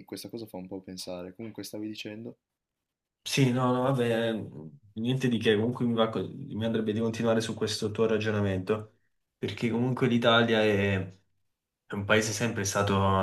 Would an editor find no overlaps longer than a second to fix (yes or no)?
yes